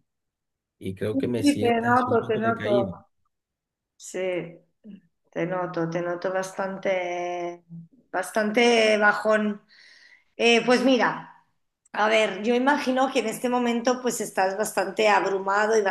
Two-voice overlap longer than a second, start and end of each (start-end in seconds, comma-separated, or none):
1.1-2.9